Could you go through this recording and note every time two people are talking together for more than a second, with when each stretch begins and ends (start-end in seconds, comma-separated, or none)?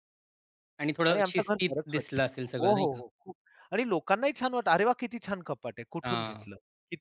1.1-3.0